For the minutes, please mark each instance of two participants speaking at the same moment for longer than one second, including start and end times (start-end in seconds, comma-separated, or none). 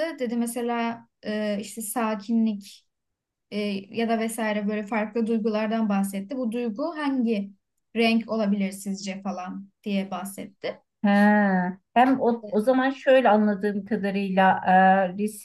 none